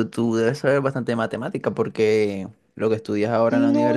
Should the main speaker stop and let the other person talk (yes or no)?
yes